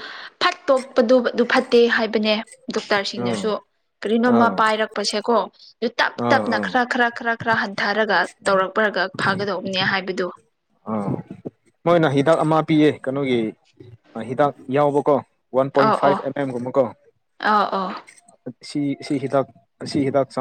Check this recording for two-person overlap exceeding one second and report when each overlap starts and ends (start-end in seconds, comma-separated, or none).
none